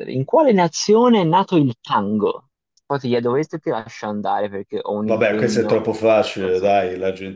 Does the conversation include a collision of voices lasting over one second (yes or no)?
yes